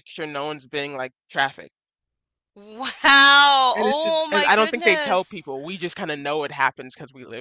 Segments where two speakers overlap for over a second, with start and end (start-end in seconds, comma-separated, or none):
3.8-5.5